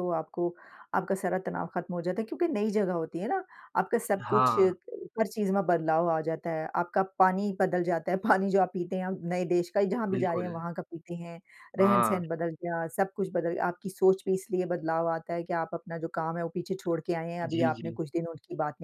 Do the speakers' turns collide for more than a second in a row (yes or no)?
no